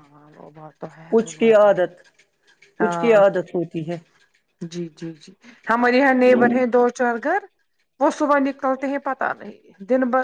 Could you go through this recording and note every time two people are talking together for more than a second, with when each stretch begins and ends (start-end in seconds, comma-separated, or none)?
none